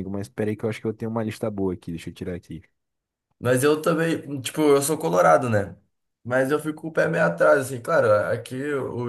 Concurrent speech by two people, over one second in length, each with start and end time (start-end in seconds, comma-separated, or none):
none